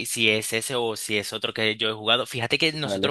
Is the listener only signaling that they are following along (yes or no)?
yes